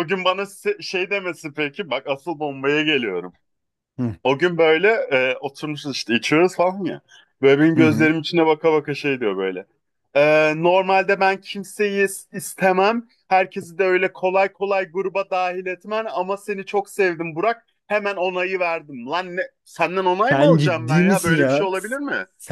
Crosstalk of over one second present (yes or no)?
yes